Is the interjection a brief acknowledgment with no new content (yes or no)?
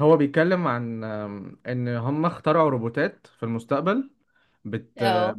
yes